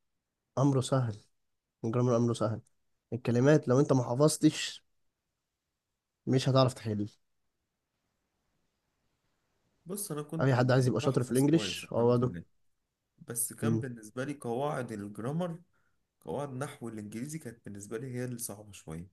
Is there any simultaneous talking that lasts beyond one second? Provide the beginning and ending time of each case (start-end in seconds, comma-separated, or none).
10.4-12.3